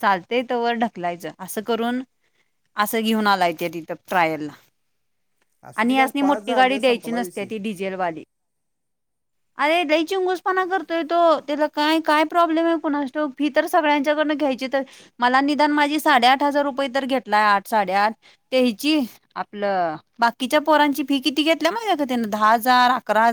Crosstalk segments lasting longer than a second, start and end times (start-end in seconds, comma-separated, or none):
5.8-7.5